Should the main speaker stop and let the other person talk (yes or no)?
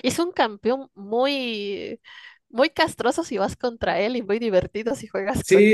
yes